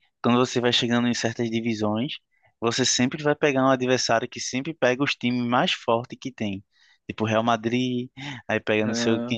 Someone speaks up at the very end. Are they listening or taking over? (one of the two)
listening